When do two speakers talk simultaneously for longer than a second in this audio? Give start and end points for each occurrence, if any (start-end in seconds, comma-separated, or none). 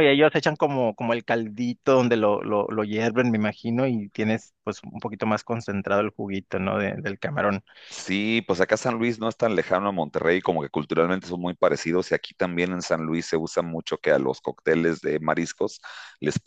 none